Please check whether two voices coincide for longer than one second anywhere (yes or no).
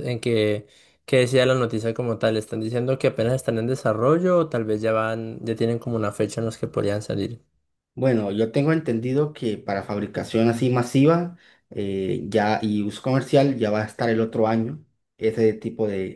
no